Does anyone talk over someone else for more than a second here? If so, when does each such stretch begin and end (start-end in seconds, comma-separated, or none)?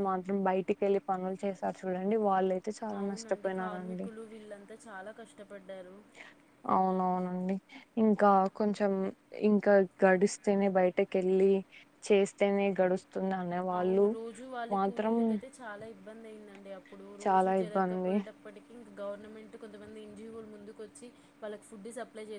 none